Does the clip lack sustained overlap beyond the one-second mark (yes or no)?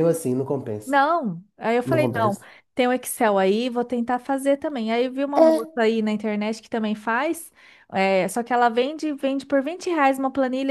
yes